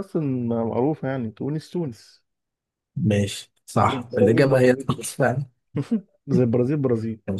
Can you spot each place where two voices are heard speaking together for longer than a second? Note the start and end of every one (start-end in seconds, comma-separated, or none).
3.8-5.1